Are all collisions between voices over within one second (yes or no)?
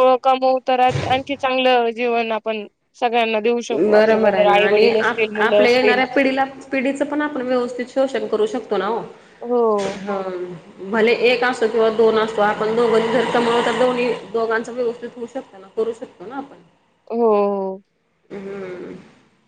no